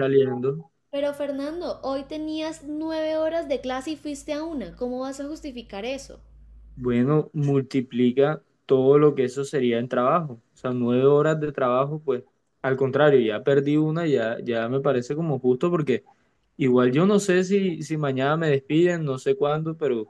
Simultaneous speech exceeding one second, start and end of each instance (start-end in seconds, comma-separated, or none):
none